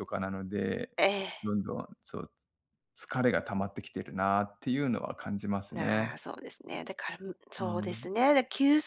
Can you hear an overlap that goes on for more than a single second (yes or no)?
no